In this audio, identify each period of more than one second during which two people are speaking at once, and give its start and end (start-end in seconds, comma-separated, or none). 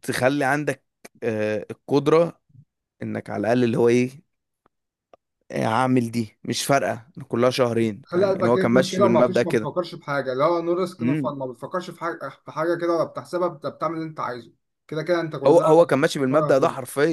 8.0-9.7